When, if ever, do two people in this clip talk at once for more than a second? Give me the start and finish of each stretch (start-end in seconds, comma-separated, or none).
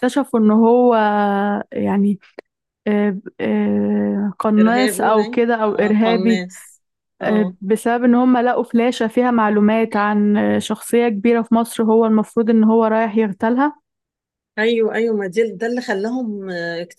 4.6-6.5